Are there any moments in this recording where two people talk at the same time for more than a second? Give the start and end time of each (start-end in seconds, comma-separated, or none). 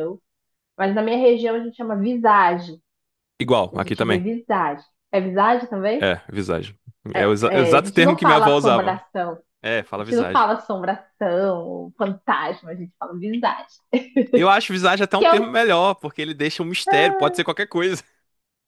7.5-9.0